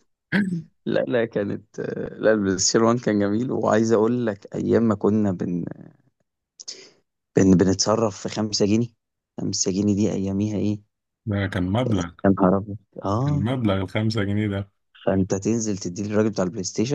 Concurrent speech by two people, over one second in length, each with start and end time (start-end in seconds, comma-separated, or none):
none